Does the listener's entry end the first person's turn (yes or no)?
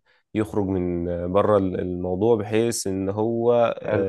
no